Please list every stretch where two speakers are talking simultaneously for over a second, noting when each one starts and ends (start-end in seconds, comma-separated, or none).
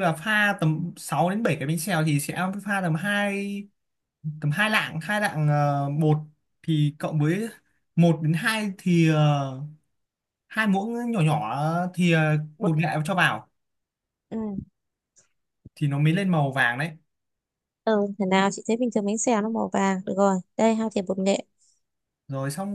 none